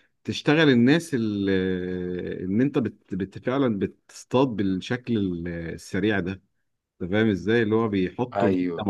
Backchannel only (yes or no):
yes